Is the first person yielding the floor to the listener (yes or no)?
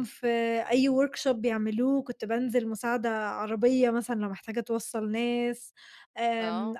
no